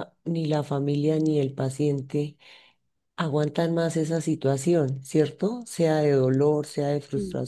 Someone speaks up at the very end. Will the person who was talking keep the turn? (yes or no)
yes